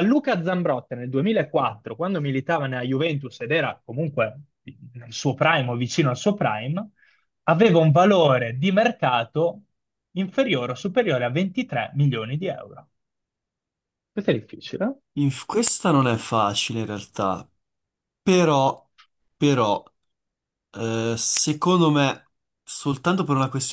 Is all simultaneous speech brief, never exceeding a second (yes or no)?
yes